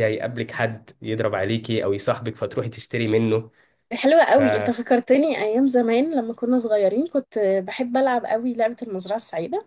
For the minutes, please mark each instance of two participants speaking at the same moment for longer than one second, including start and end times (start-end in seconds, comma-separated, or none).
none